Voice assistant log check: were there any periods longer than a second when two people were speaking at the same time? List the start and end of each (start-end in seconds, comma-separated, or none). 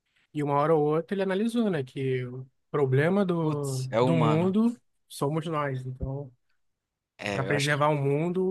3.4-4.6